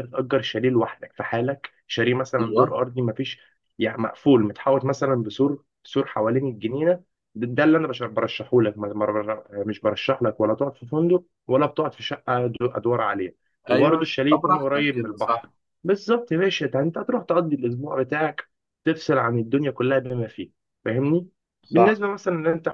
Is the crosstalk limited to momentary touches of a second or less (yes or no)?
no